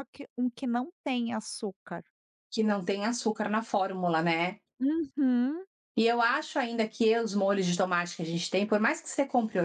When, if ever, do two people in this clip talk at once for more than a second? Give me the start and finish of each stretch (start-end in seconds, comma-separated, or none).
none